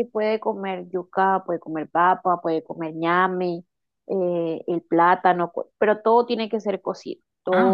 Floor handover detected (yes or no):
yes